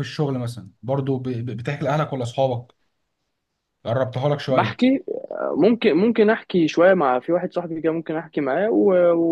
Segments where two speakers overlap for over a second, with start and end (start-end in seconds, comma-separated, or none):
none